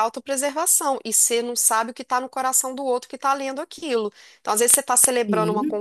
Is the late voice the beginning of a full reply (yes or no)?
no